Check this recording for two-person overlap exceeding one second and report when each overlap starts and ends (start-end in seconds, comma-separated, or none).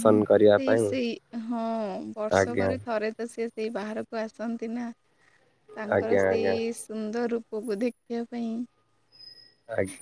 none